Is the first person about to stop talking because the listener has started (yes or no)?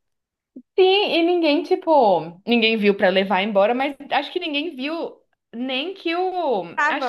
no